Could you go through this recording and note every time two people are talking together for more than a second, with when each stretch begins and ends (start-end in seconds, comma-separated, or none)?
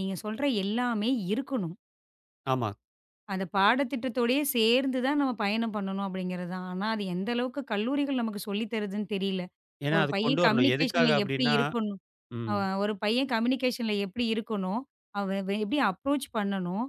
9.9-11.6